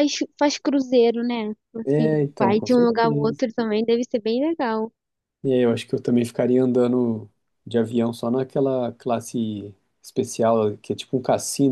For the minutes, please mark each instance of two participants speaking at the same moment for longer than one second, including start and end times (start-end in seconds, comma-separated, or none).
1.9-3.4